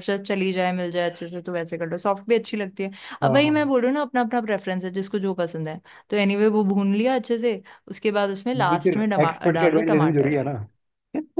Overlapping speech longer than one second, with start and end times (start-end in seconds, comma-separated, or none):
8.6-10.4